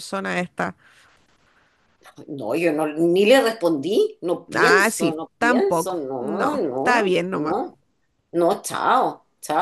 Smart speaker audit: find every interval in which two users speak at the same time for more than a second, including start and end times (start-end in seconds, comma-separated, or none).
4.5-7.6